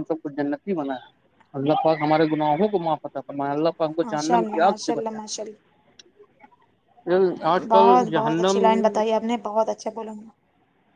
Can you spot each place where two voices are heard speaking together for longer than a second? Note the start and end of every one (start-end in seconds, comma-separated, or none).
4.0-5.7